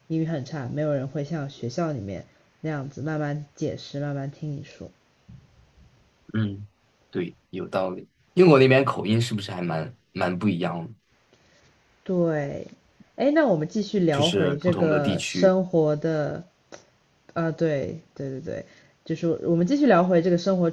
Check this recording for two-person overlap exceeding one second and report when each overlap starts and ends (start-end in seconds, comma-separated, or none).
14.1-15.5